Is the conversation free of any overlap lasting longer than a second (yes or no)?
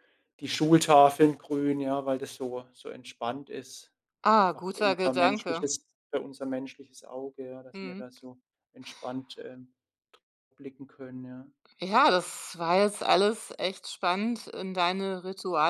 no